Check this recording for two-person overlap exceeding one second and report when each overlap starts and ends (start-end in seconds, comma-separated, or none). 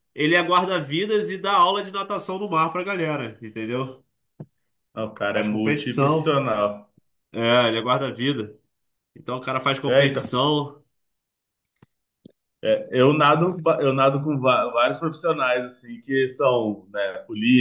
5.2-6.4